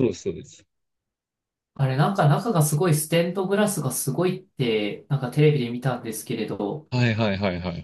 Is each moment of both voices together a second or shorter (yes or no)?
yes